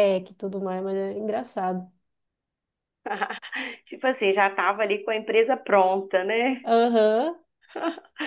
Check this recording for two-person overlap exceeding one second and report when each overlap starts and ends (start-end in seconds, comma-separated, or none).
none